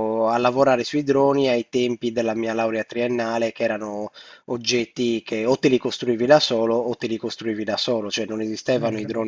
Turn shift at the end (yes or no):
no